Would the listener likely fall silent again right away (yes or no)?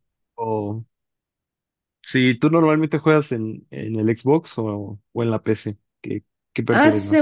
no